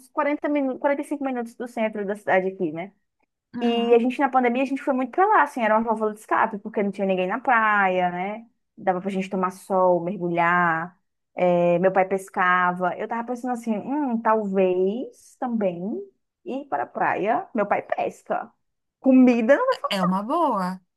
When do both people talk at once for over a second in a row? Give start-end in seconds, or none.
none